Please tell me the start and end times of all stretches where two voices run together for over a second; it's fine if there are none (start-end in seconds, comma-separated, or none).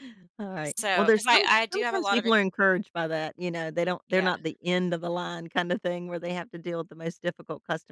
0.6-2.4